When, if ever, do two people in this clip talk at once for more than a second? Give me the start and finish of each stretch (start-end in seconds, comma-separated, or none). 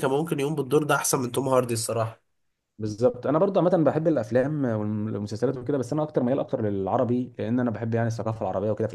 none